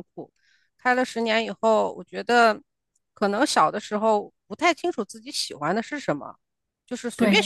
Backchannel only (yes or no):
yes